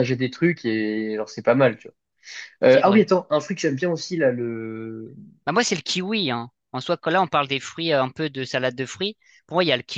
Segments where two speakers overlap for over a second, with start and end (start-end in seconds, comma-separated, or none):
none